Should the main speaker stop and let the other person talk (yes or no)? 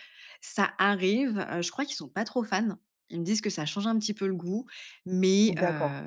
no